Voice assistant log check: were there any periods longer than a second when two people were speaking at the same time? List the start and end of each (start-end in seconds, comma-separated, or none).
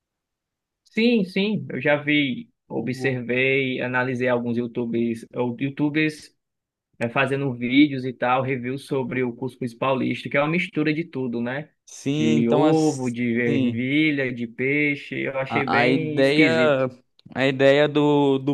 12.1-13.8, 15.5-16.9